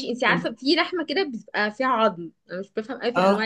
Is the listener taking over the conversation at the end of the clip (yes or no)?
no